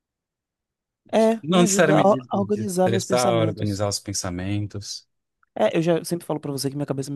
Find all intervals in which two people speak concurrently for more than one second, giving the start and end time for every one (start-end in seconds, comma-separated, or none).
1.4-3.8